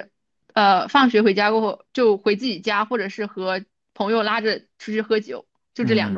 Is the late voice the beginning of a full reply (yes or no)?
yes